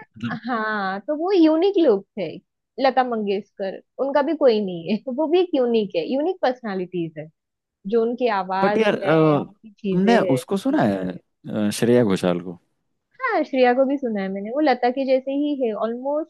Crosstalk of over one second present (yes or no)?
no